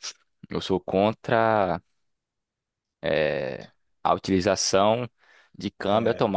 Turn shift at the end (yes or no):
no